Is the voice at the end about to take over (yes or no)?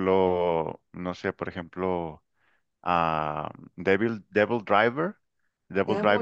no